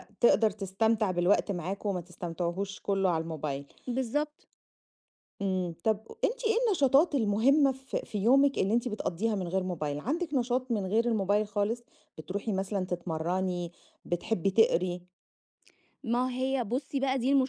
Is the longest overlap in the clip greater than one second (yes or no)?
no